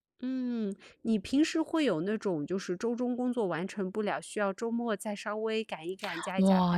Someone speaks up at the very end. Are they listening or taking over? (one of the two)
taking over